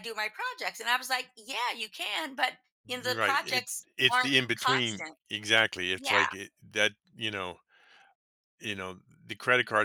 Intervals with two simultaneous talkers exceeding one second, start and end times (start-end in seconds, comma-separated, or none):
3.0-5.2